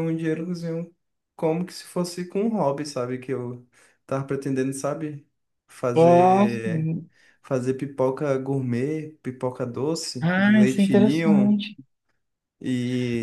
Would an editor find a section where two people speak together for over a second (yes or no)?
yes